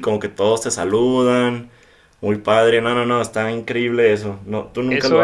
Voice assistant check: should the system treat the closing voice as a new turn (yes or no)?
yes